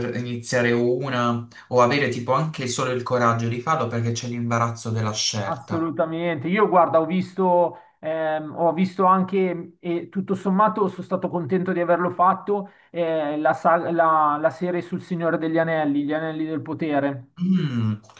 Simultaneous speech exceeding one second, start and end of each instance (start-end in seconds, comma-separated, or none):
none